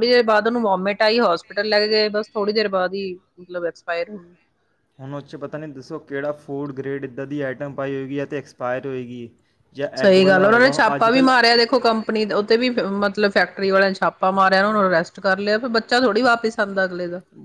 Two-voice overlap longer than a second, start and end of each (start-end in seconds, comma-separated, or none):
10.0-11.3